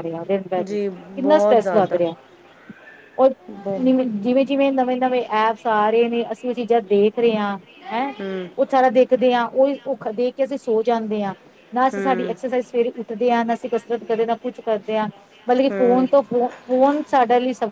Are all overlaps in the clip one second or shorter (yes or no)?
no